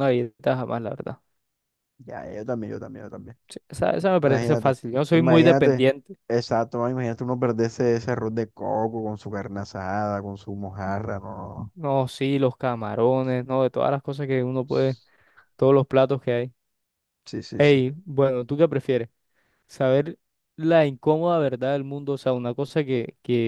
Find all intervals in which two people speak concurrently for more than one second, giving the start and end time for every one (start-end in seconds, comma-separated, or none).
4.2-5.8